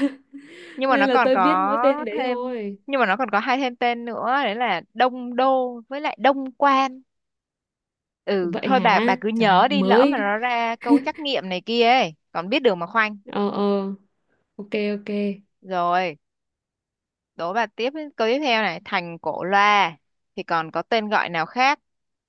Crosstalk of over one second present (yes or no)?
yes